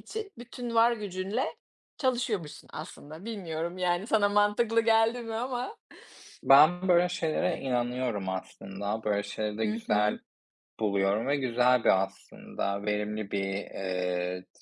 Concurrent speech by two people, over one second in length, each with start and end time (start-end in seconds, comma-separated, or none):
none